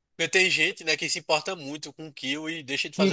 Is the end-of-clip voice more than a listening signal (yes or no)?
yes